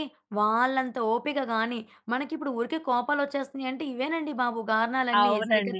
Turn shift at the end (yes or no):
yes